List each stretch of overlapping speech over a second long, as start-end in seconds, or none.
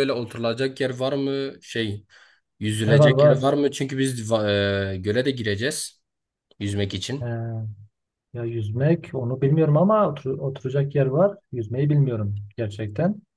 none